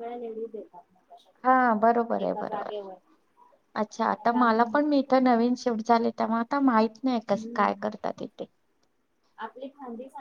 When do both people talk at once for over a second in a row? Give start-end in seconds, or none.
none